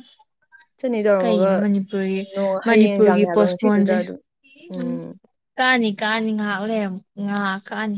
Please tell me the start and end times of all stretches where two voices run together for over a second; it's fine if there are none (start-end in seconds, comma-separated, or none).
2.7-4.0